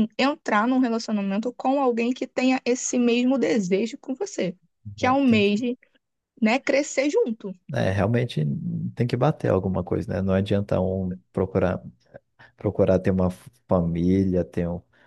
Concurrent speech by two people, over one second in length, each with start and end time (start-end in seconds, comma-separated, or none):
none